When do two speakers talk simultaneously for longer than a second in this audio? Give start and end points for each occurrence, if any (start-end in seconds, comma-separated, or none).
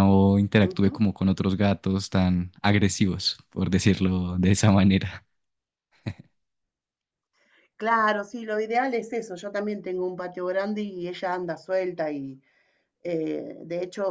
none